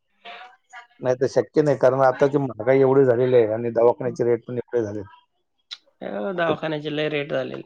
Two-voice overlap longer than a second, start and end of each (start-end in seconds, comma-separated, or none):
none